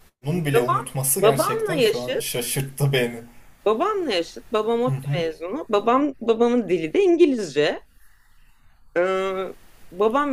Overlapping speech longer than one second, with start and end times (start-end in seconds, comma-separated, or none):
0.5-2.4